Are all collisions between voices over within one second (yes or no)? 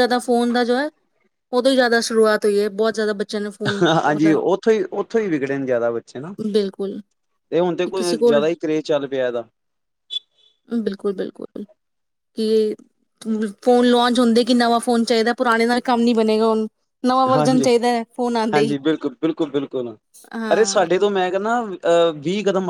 no